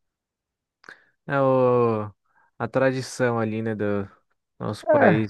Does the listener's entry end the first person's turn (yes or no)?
no